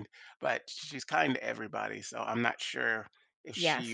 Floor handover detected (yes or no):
yes